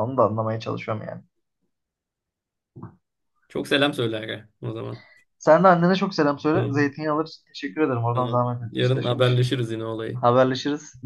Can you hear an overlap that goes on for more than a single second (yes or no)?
yes